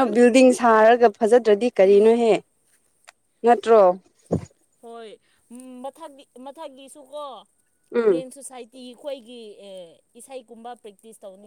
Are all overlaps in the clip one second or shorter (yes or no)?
yes